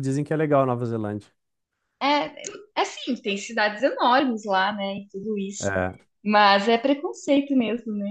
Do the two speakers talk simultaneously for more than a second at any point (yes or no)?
no